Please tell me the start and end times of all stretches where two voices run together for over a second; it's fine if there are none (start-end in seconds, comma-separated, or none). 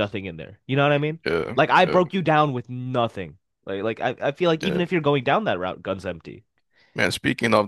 none